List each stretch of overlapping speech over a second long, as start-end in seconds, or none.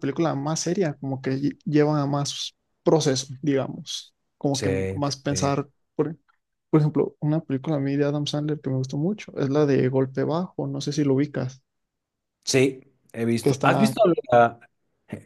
none